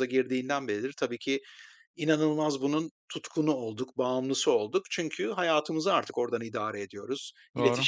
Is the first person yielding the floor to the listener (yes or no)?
no